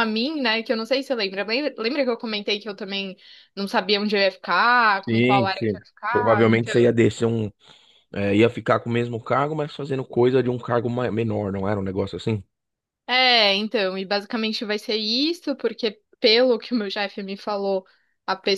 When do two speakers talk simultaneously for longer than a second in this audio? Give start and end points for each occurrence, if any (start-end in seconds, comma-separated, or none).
5.1-6.7